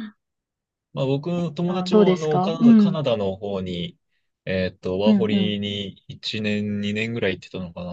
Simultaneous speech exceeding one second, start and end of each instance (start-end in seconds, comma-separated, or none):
1.6-3.0